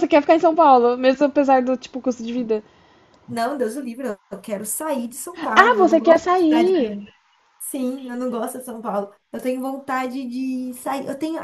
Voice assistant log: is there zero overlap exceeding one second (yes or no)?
no